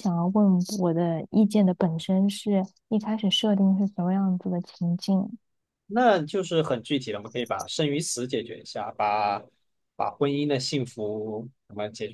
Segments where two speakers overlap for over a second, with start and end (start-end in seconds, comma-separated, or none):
none